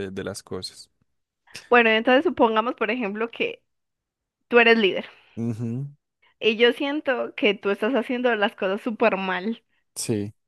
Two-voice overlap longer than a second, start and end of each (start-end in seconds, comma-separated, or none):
none